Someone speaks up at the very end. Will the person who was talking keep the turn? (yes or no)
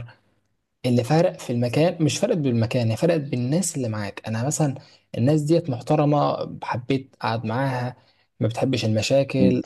yes